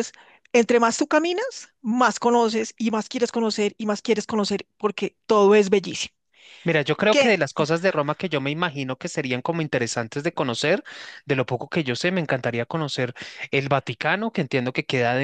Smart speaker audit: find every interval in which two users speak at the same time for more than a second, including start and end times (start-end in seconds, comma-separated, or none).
none